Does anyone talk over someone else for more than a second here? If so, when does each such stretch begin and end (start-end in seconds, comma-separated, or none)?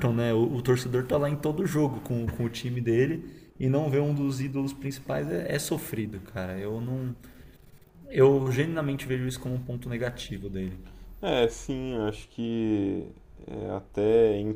none